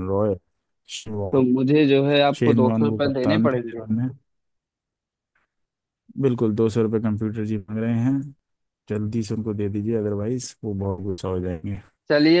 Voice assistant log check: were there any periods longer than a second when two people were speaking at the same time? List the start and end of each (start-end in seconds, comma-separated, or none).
2.4-3.9